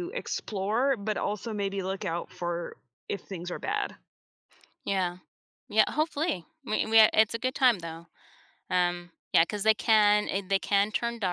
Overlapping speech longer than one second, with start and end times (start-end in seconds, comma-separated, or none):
none